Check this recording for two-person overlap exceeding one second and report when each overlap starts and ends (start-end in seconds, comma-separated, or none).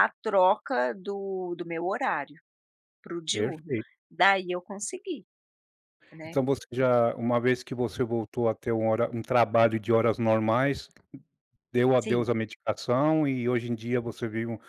none